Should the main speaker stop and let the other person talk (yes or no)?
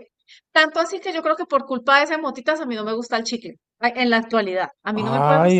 yes